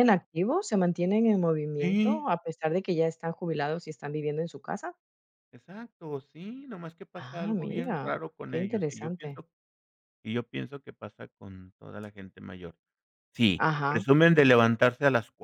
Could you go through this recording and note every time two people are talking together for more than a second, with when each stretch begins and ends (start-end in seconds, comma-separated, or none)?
7.2-9.4